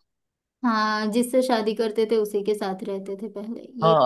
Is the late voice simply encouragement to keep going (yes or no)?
no